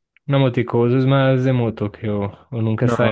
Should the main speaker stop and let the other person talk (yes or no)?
yes